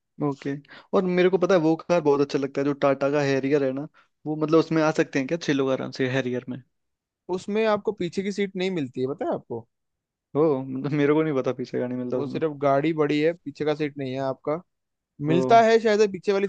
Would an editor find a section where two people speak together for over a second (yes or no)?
no